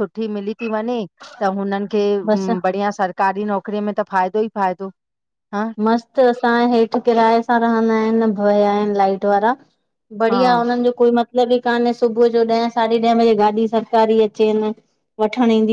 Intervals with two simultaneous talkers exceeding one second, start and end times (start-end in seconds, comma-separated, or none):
none